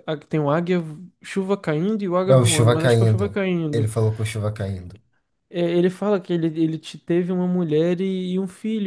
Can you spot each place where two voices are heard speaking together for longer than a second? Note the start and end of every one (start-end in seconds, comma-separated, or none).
2.3-3.9